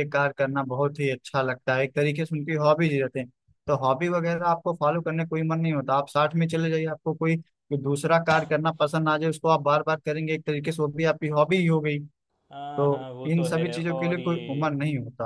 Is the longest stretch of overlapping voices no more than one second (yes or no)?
no